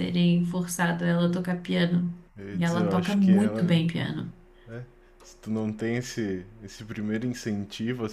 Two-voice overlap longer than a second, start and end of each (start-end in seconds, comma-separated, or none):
2.5-3.7